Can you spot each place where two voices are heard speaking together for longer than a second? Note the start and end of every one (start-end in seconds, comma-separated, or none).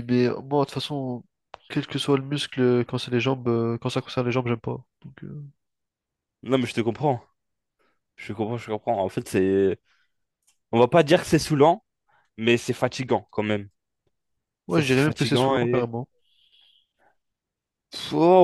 14.7-15.9